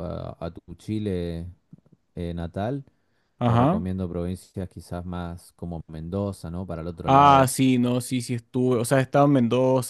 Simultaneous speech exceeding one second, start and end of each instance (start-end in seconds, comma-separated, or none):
none